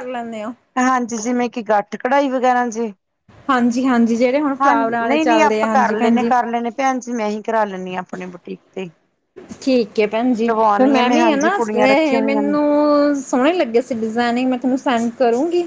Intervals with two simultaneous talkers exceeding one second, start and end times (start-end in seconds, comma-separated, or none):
4.6-6.3, 11.2-12.6